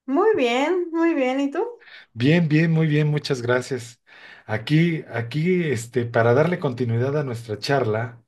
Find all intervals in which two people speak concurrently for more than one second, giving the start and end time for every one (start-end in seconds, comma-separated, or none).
none